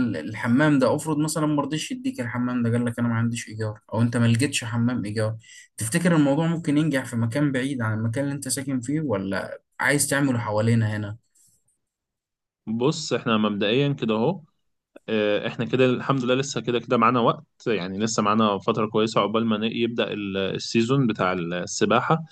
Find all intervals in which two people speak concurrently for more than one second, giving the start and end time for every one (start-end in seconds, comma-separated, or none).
none